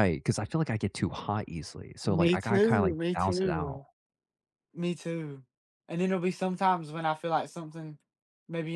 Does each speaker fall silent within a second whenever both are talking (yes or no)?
no